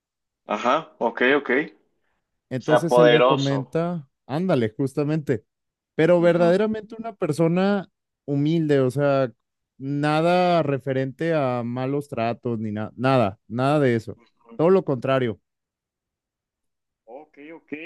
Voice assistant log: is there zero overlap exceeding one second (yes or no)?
no